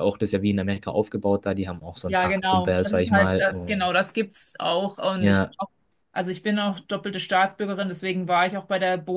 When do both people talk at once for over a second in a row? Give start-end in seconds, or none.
2.0-3.9